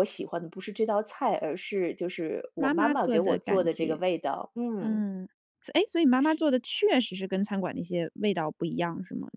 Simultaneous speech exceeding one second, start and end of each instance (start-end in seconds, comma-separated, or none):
2.6-4.0